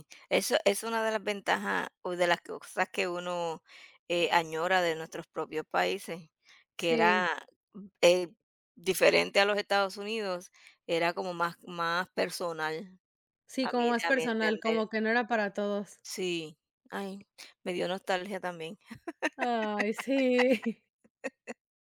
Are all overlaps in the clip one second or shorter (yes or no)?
no